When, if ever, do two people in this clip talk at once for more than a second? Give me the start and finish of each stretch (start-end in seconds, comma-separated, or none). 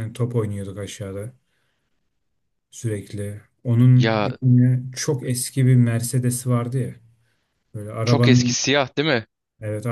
none